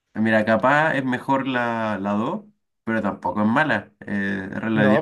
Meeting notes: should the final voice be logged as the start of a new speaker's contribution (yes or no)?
yes